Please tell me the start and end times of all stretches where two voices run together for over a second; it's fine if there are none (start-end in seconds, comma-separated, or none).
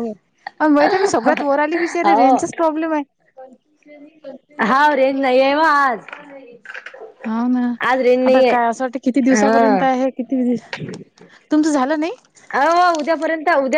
none